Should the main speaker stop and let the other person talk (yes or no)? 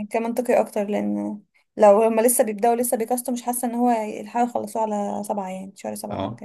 yes